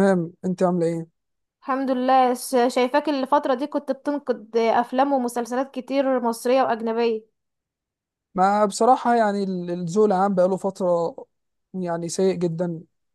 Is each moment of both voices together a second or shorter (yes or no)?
yes